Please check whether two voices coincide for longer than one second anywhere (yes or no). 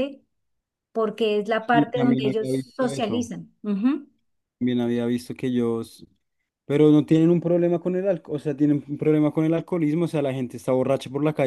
yes